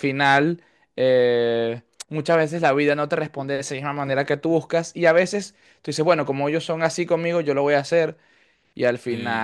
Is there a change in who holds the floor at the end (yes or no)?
yes